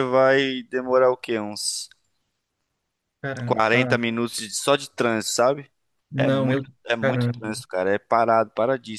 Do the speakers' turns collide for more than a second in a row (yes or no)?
yes